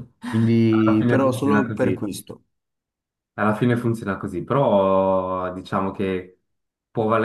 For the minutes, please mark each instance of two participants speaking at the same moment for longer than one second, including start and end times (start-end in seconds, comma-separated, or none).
0.7-2.0